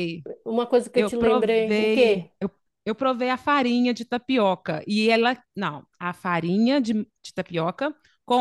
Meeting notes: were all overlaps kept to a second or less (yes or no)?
no